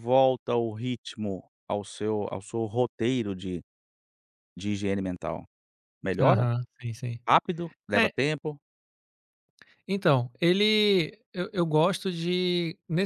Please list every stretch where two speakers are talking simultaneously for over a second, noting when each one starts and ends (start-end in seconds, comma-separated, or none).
none